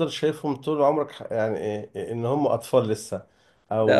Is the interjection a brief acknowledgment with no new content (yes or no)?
yes